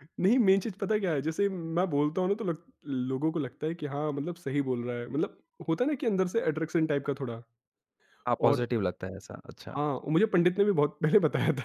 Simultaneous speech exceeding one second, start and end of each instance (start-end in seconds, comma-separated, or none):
none